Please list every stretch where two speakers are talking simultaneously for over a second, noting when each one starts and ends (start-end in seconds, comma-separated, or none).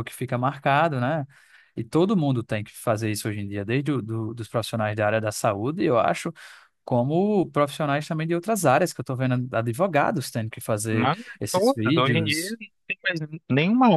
10.9-12.6